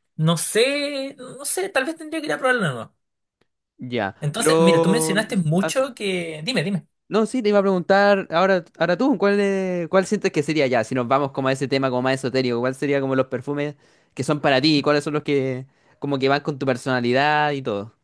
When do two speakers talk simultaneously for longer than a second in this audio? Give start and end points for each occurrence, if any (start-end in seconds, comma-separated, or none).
4.2-5.9